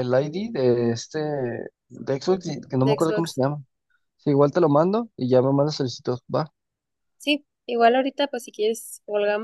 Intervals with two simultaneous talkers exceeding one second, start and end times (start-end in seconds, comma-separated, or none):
none